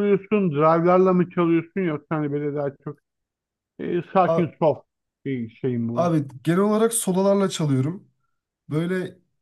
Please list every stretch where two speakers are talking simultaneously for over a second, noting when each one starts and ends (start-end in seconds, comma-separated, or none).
none